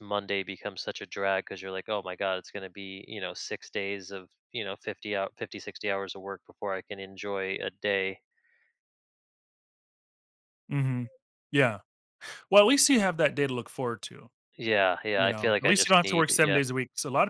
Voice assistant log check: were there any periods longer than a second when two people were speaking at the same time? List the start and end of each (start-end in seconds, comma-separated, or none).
15.2-16.6